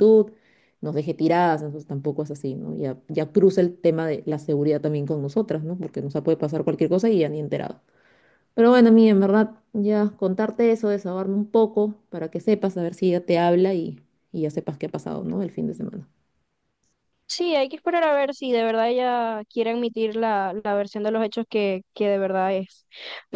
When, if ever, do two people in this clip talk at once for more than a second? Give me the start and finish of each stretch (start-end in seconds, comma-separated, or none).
none